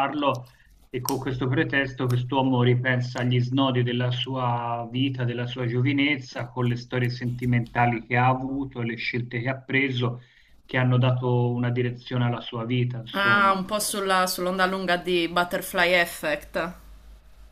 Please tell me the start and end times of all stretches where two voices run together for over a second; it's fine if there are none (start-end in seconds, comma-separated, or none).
none